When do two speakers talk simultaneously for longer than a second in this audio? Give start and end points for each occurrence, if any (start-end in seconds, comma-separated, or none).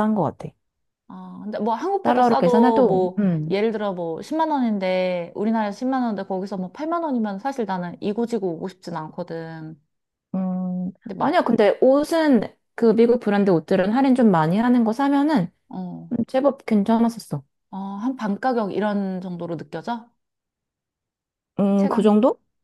2.0-3.5